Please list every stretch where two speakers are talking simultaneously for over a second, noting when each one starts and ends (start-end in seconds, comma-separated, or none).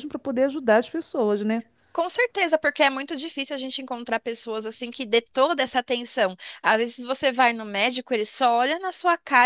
none